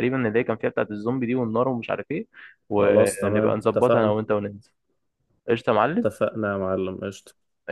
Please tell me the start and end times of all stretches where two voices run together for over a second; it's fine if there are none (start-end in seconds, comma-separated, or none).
2.8-4.2